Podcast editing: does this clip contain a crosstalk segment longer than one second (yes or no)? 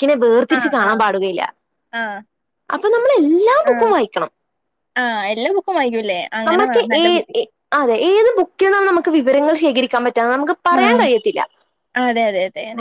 no